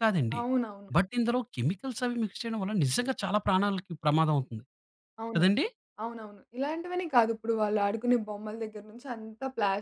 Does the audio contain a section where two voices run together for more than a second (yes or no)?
no